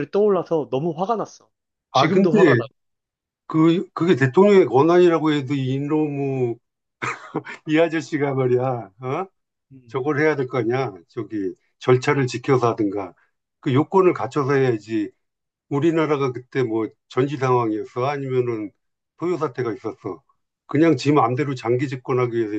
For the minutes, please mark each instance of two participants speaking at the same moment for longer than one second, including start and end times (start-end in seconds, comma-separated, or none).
none